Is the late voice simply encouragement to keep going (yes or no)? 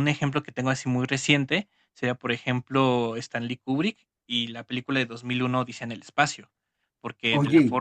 yes